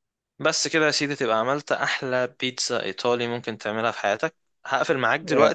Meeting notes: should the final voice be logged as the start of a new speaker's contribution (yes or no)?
yes